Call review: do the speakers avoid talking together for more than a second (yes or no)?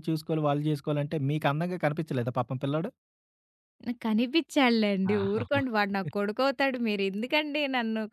yes